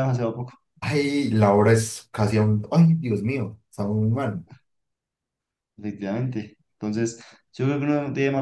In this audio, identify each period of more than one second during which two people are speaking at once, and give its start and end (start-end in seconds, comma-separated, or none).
none